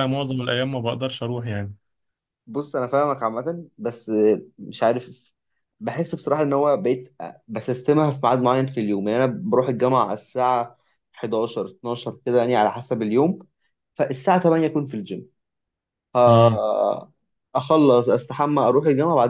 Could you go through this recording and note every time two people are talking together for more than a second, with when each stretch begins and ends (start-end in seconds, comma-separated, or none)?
none